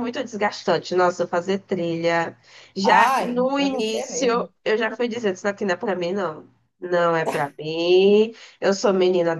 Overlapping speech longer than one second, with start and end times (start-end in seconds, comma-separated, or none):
2.8-4.5